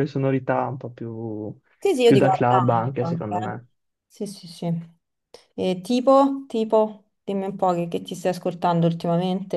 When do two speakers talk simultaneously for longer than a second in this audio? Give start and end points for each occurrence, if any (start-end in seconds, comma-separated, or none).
2.0-3.5